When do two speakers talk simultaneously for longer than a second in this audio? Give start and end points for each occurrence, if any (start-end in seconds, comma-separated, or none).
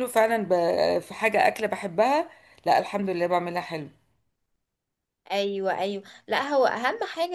none